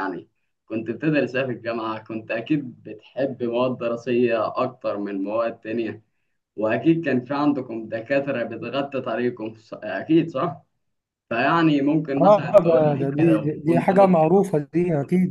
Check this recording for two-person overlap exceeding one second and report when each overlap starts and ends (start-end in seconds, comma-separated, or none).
12.2-14.2